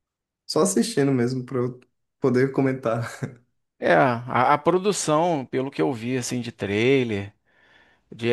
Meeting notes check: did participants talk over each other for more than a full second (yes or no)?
no